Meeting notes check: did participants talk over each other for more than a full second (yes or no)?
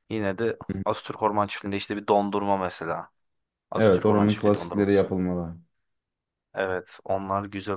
yes